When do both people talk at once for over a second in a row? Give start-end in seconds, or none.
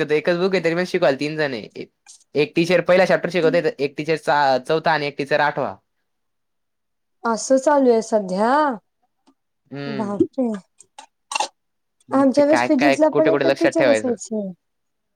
12.2-14.2